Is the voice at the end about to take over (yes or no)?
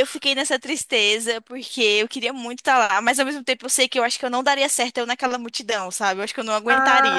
yes